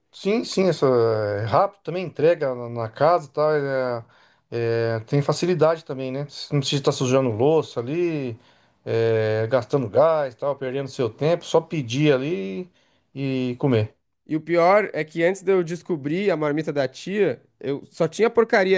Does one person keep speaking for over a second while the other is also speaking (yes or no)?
no